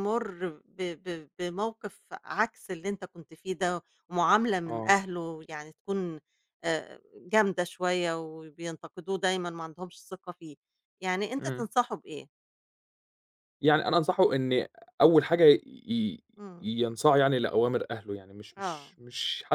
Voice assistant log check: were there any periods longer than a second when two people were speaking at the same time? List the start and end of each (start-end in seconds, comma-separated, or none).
none